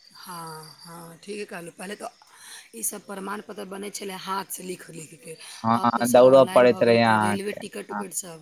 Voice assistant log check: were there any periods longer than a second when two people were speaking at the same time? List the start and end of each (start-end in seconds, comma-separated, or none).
5.8-7.6